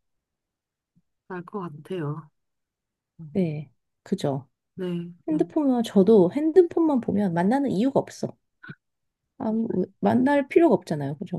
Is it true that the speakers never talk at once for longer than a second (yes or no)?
yes